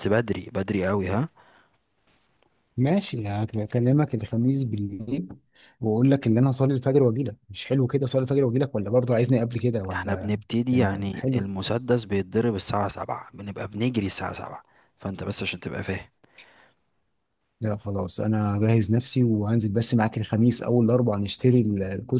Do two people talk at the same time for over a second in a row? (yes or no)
yes